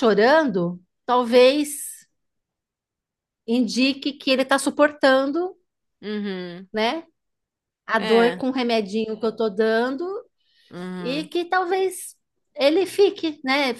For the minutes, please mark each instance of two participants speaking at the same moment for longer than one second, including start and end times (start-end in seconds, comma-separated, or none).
none